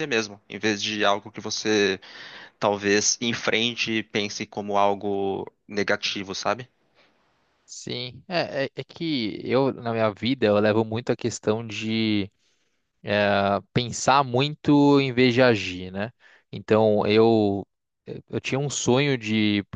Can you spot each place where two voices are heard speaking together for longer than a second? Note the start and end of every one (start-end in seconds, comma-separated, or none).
none